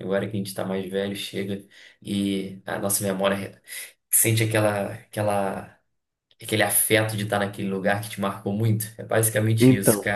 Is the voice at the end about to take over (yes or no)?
yes